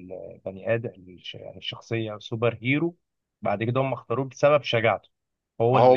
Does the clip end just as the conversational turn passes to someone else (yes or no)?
no